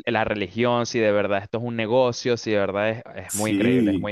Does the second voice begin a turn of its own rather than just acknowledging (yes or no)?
yes